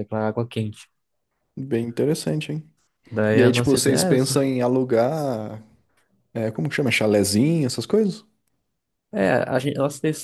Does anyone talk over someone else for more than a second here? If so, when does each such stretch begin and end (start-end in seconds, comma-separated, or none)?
3.3-4.6